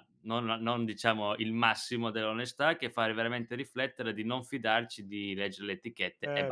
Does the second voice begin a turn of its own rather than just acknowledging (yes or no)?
no